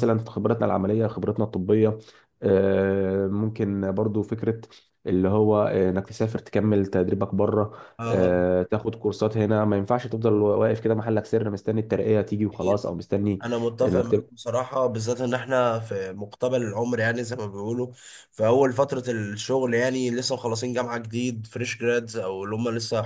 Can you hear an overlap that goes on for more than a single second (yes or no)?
no